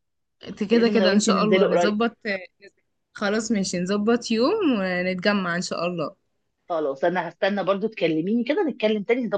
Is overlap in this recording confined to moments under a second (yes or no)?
no